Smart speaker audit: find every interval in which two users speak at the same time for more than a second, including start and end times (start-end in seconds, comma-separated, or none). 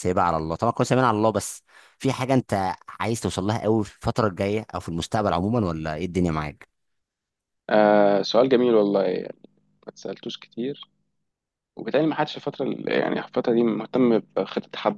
none